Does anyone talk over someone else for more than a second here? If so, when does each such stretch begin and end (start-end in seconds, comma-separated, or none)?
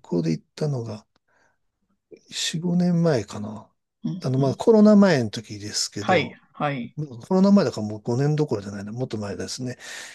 none